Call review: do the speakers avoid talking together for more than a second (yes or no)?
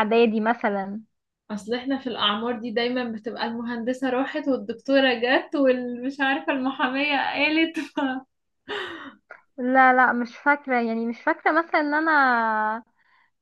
yes